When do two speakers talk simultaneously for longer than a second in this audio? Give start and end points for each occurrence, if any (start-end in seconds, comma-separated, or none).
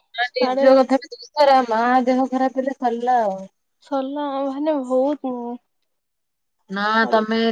none